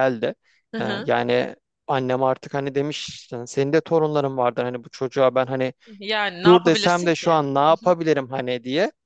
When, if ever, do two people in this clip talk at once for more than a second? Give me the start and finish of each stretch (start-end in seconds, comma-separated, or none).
6.4-7.9